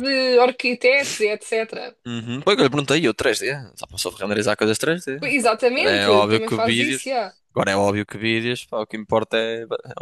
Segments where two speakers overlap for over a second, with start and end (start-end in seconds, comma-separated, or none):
5.2-7.1